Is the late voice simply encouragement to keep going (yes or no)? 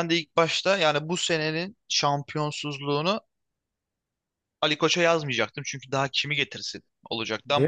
yes